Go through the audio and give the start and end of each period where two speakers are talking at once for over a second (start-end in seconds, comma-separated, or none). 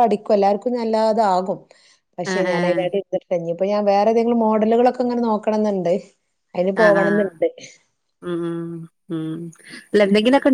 none